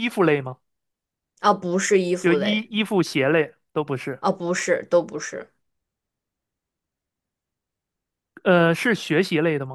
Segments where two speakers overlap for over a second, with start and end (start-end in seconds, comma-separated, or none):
none